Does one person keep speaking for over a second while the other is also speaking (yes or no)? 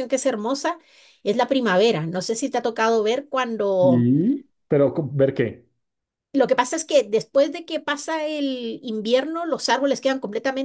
no